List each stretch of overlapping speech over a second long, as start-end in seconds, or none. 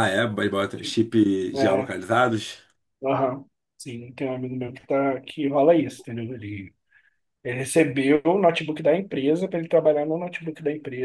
none